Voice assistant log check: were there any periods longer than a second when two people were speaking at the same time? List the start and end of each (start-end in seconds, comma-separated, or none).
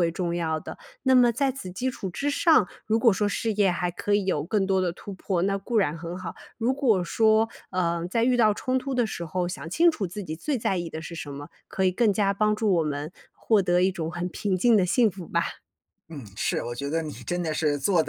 none